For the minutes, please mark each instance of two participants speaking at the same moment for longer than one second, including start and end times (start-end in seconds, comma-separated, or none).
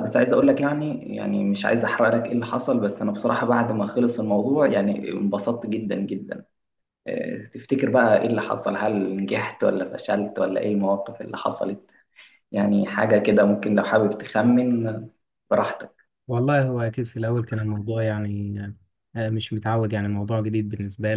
none